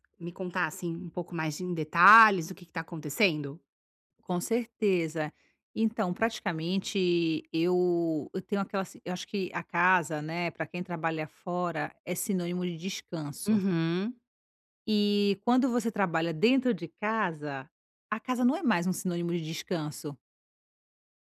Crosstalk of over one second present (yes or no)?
no